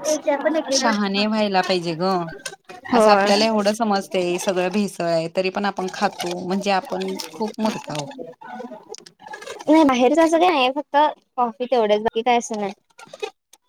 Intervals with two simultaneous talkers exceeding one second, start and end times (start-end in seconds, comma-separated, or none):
none